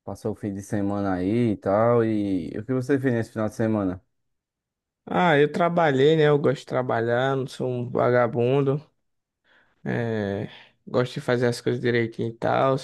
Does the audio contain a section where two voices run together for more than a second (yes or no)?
no